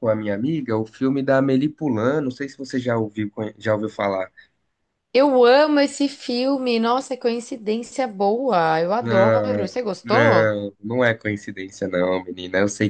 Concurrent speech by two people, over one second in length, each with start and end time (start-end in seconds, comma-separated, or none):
9.0-10.5